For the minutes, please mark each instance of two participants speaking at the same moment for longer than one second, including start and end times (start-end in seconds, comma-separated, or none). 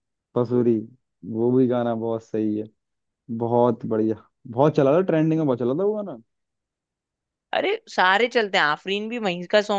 none